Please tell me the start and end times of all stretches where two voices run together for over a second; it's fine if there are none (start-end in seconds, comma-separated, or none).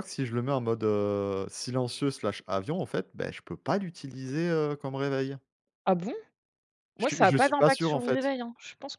7.0-8.3